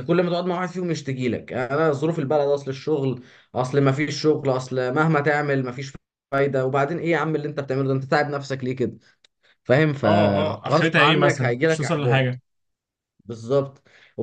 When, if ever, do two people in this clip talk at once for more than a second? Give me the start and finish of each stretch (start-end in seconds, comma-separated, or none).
10.0-12.4